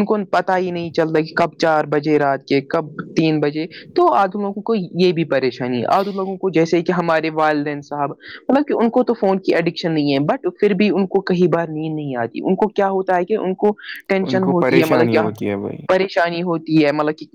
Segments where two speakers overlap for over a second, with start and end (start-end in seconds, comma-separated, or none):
14.3-16.0